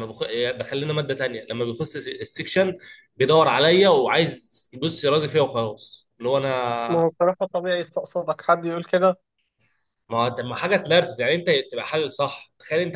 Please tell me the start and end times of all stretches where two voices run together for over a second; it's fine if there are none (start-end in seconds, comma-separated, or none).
none